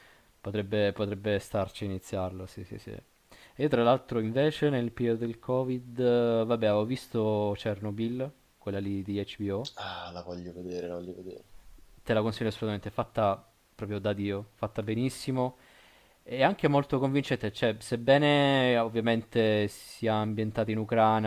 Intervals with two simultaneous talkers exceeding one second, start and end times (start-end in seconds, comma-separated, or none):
none